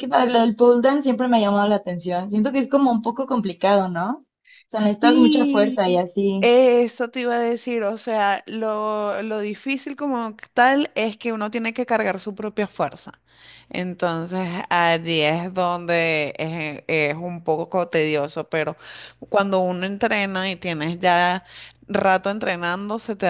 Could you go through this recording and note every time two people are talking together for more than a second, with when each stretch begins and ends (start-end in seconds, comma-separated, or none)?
5.0-6.5